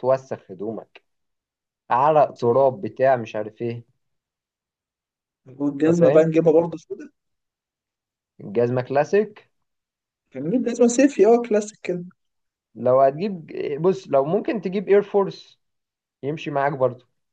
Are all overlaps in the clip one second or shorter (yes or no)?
yes